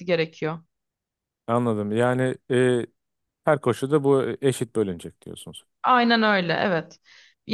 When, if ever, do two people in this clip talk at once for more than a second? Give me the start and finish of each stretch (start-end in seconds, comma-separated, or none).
none